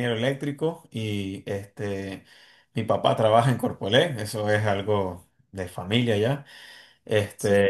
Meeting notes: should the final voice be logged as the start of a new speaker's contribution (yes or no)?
no